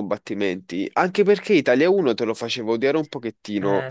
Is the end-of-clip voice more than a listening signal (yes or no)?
no